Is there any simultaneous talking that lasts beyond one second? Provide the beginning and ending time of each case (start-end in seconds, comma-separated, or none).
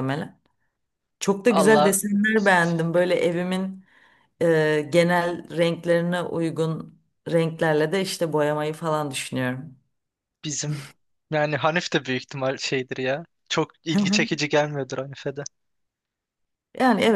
none